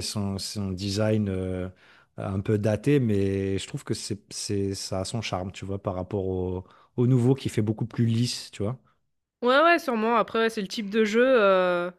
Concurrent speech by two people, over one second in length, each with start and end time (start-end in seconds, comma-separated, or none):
none